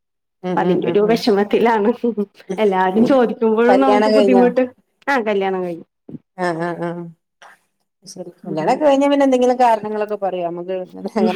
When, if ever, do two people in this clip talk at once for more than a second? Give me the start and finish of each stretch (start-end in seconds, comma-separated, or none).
none